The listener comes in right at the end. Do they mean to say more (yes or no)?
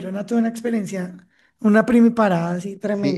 yes